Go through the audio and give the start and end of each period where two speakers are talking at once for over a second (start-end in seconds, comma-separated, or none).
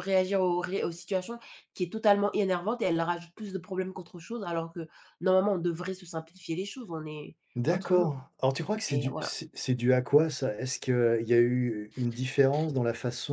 none